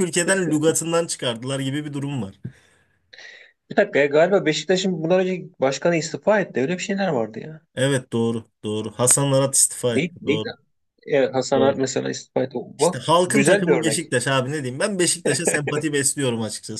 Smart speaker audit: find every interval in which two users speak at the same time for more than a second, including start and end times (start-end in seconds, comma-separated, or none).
12.8-14.1